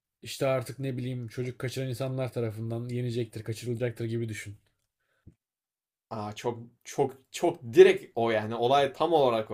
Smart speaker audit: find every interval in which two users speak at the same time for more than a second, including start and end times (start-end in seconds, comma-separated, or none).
none